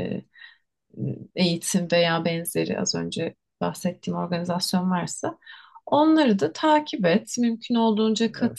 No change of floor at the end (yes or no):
yes